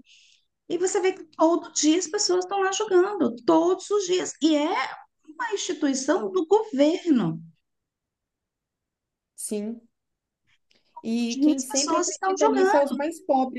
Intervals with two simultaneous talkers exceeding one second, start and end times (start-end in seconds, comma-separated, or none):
11.4-12.7